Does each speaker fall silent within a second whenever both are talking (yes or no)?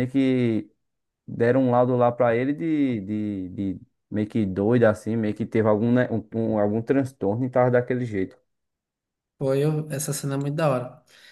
yes